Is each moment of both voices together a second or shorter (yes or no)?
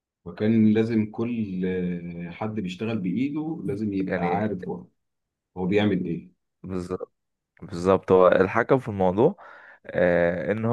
yes